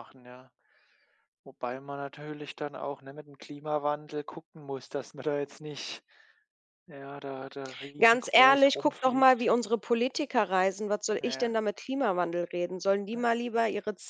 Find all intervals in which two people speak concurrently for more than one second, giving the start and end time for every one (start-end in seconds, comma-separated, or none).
8.0-9.5